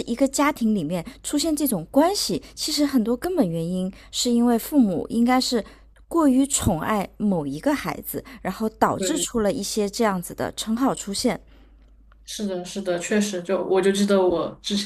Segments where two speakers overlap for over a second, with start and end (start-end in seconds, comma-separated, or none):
none